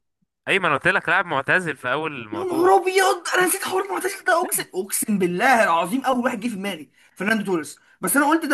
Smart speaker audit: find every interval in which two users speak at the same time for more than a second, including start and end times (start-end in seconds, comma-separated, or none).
none